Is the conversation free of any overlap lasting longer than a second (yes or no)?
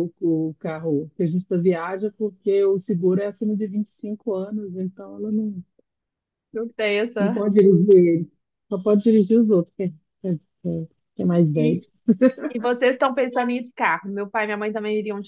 yes